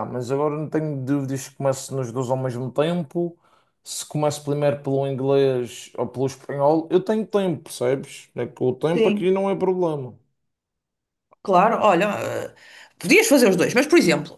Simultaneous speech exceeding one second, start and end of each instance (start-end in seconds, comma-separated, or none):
none